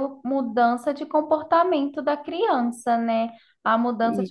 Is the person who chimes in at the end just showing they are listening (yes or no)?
yes